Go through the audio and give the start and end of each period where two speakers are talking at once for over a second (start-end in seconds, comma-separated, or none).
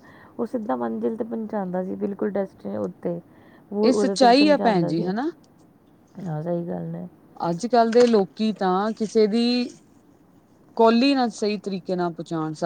3.9-5.1